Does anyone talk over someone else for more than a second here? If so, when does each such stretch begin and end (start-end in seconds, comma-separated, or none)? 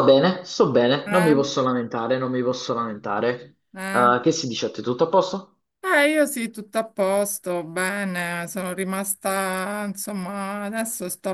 none